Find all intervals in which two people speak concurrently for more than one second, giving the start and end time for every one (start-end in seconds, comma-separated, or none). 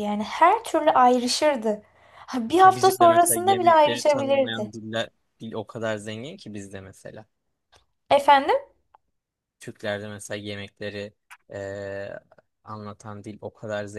2.6-4.7